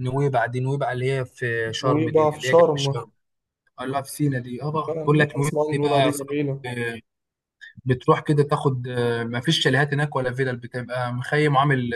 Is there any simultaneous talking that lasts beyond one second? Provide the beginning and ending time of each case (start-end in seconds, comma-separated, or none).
1.8-3.1, 4.7-6.7